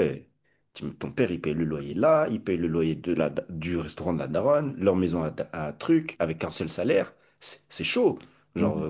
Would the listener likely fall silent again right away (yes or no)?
yes